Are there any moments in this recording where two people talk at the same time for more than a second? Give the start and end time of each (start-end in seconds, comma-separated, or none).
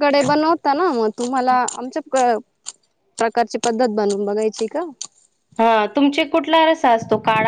none